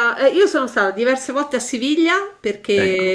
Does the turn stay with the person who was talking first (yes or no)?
yes